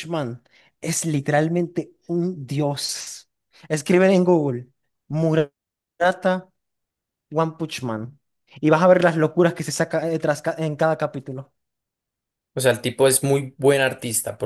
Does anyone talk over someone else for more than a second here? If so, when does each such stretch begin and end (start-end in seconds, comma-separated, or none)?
none